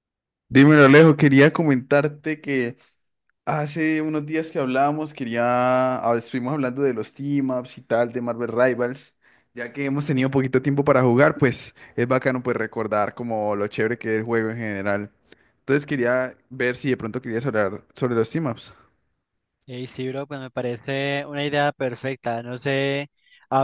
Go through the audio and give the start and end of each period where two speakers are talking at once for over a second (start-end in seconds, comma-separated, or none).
none